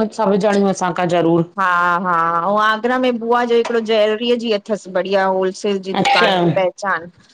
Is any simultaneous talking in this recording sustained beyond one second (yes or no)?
no